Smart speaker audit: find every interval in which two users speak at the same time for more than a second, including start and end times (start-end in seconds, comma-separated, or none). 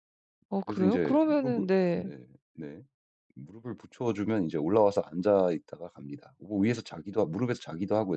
0.6-2.1